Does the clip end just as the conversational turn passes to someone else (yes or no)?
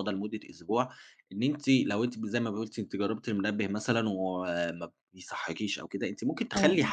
no